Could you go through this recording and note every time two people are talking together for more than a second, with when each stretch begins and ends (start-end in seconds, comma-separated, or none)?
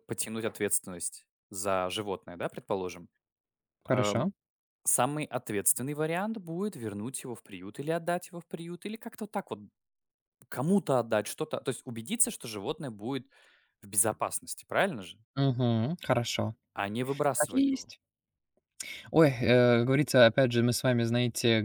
none